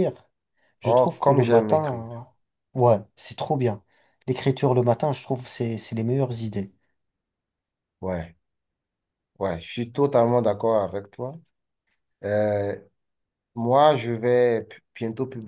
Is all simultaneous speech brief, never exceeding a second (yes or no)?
no